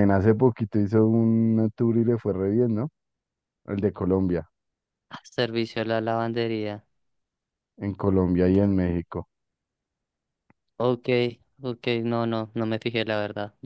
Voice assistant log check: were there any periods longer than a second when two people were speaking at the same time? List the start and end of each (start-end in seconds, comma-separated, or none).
none